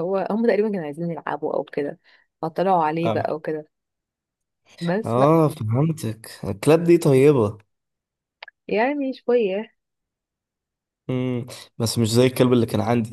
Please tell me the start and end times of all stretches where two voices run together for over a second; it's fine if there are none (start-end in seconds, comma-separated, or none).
none